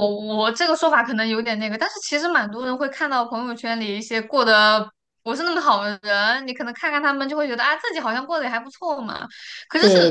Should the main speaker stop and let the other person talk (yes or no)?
no